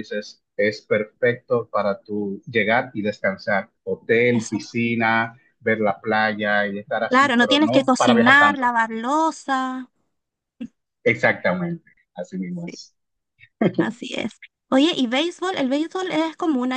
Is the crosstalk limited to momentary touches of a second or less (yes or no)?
no